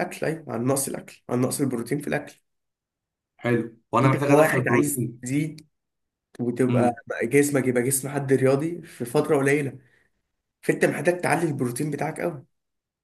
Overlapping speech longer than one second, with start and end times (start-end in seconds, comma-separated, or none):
4.0-5.2